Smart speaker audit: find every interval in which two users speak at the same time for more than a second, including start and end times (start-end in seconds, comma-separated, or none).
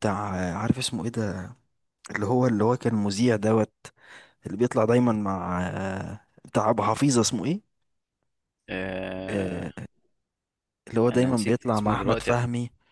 11.1-12.3